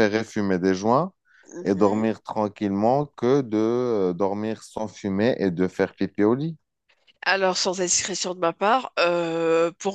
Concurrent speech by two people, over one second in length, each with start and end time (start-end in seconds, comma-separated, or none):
none